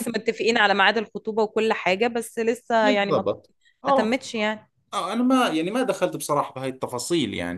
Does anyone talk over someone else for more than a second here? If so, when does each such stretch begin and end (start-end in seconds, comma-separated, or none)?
none